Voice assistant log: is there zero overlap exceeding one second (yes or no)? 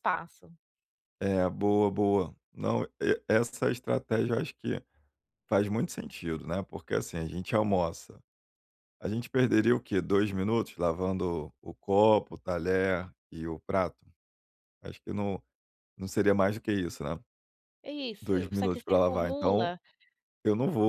no